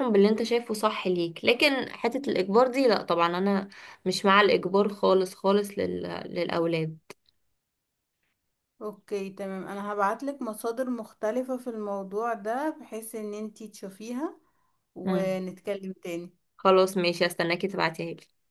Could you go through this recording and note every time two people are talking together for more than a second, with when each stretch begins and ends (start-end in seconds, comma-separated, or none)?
none